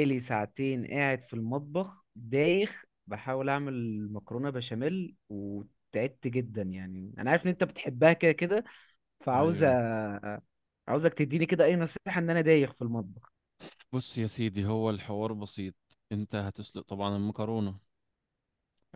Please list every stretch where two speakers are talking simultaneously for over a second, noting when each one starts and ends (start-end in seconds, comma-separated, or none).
none